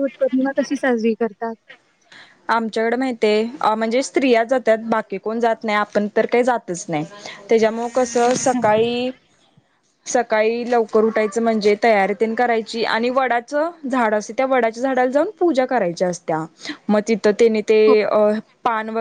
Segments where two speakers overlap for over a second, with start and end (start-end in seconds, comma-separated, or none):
none